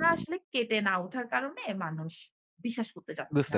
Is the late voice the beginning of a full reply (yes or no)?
yes